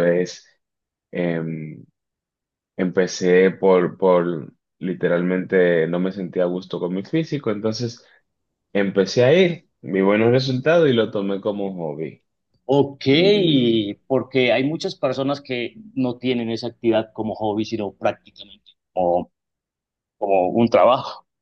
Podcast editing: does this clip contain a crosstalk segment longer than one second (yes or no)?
no